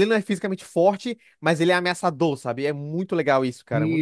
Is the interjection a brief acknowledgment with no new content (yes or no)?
no